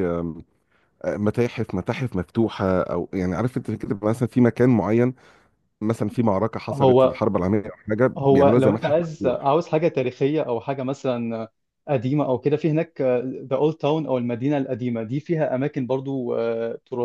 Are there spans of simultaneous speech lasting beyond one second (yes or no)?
yes